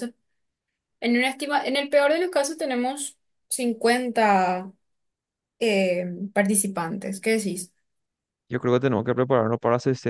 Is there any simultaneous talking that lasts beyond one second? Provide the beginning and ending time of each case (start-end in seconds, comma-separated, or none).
none